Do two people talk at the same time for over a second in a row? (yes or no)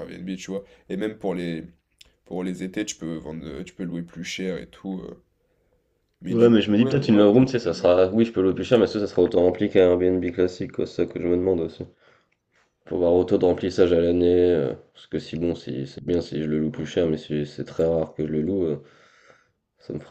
yes